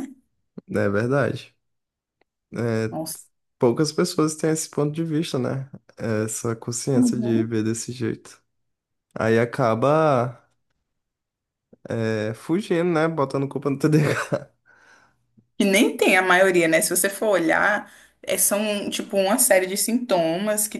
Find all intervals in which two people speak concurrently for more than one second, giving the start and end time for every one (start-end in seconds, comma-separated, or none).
none